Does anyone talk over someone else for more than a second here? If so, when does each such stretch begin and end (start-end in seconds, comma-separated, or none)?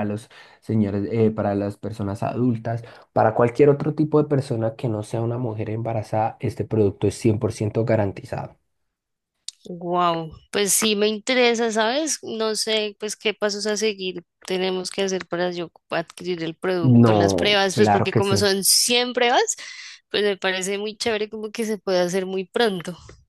16.8-18.5